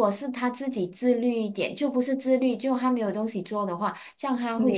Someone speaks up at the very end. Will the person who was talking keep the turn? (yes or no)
no